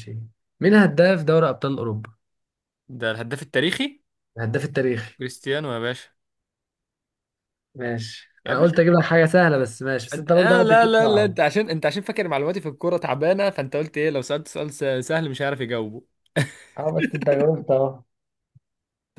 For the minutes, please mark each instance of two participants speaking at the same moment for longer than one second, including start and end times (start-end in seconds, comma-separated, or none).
10.1-11.4